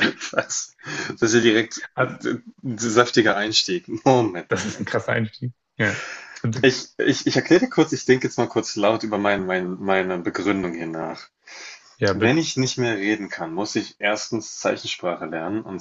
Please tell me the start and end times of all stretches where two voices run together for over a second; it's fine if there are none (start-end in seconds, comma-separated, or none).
none